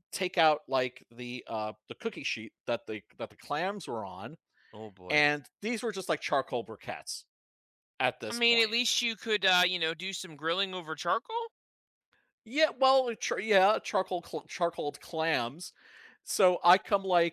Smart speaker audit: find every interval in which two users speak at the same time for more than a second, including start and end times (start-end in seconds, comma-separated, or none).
none